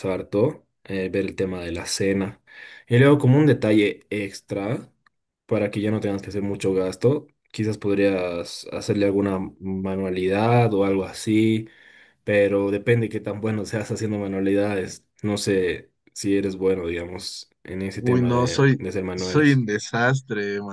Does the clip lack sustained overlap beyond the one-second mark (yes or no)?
no